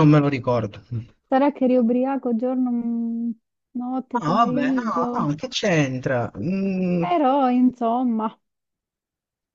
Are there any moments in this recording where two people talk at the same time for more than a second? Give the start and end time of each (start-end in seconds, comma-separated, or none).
4.1-5.3